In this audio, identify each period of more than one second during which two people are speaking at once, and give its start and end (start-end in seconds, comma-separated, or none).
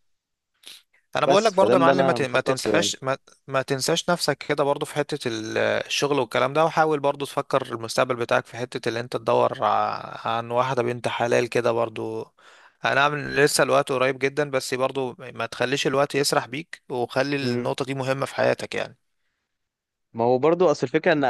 1.2-2.7